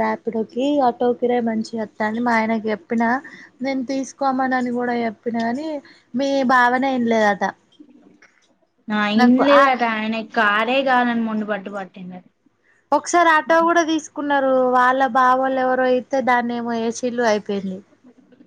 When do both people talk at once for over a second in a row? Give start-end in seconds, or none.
none